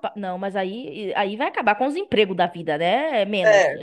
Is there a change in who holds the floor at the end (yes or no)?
no